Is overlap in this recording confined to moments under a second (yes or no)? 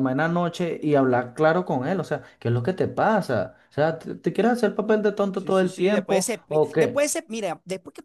no